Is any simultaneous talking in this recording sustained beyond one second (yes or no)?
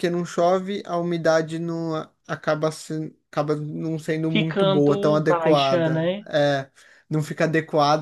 yes